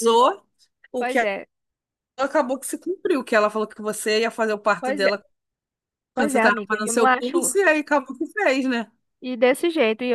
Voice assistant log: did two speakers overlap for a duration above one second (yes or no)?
yes